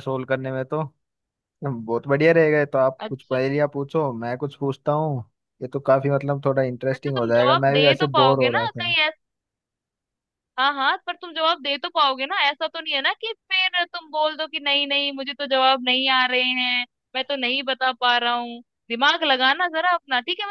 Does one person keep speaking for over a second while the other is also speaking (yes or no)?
yes